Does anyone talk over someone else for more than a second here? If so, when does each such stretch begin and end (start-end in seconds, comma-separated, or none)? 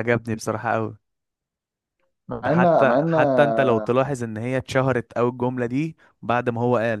2.4-3.9